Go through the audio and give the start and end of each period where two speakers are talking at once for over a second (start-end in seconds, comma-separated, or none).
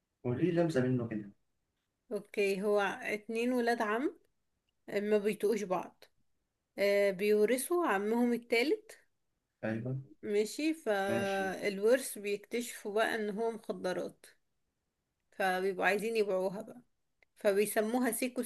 none